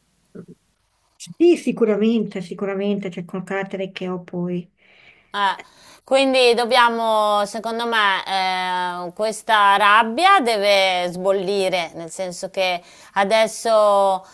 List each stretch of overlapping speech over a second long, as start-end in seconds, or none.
none